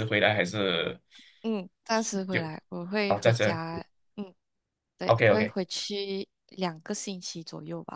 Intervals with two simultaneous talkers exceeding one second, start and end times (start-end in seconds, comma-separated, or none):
none